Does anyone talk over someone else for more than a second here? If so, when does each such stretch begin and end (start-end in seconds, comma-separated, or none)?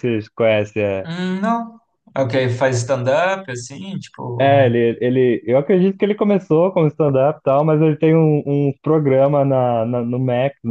none